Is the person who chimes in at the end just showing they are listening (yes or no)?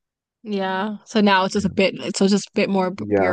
no